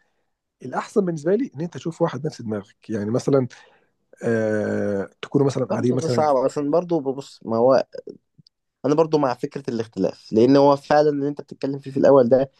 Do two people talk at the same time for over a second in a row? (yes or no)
no